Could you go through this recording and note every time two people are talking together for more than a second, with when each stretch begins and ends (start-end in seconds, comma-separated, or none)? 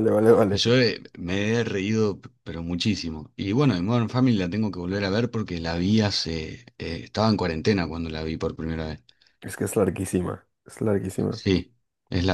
none